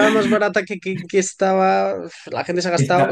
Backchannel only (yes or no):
no